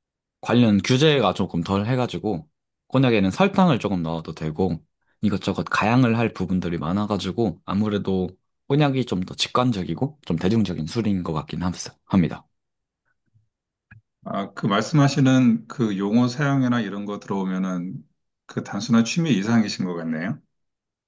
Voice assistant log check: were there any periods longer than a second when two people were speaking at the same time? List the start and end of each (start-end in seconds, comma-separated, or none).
none